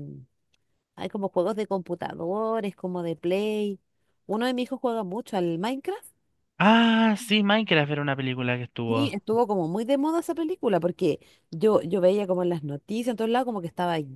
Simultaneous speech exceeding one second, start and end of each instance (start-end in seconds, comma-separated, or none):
none